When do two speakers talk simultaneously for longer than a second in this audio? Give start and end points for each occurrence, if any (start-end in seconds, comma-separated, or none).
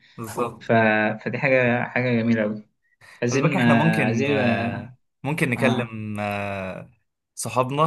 3.3-4.9